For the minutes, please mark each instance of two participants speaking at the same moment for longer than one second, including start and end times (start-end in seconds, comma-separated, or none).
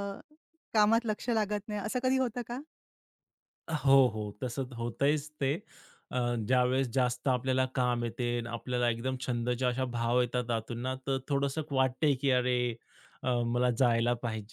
none